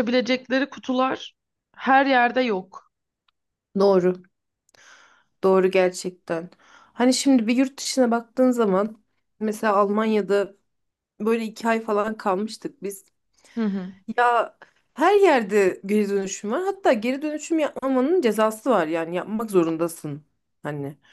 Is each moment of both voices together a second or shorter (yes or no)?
yes